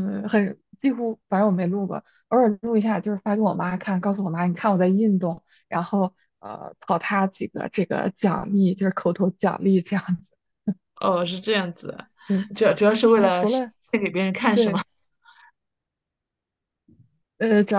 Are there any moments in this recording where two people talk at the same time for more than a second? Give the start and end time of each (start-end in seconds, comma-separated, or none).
none